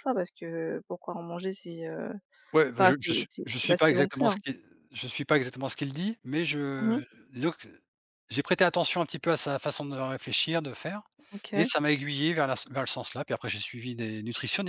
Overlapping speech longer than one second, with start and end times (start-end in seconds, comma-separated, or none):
2.8-4.3